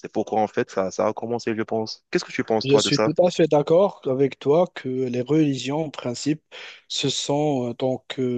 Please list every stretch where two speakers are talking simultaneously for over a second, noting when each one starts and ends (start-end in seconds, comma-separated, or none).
none